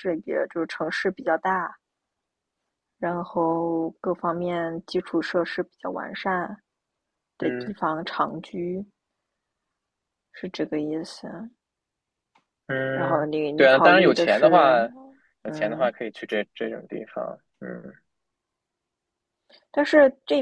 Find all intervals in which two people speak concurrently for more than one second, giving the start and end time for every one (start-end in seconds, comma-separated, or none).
12.9-14.7